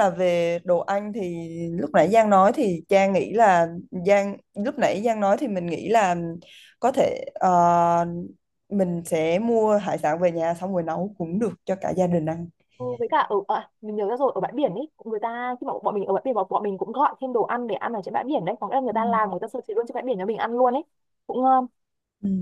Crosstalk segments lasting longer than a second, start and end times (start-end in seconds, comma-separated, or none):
none